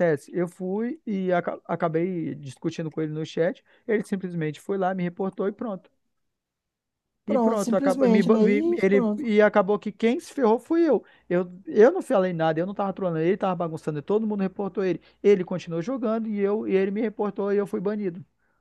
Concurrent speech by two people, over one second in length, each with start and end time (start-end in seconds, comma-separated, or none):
7.3-9.3